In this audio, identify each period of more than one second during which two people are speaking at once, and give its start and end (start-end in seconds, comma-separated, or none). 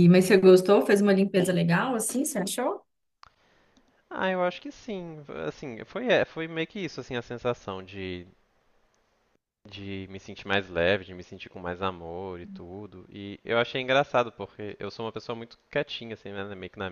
none